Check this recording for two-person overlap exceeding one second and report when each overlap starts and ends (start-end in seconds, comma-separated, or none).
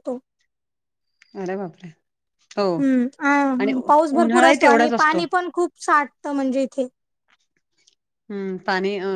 3.6-5.2